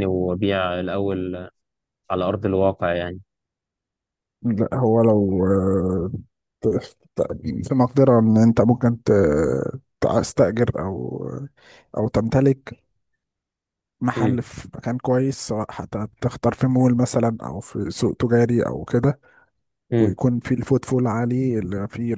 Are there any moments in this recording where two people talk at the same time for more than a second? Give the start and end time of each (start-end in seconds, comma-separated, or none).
none